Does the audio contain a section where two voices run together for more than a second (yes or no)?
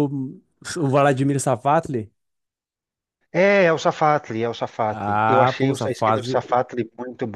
yes